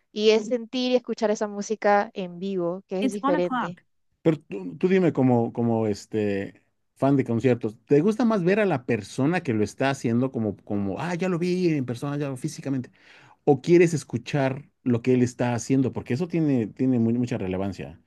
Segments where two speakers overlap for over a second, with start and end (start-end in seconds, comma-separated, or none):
none